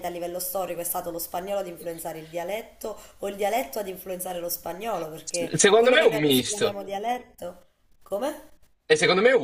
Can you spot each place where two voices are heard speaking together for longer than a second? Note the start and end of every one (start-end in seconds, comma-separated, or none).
5.4-6.8